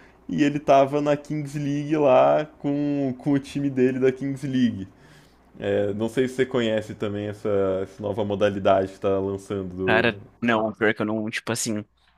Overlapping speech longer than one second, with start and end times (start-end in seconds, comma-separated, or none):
none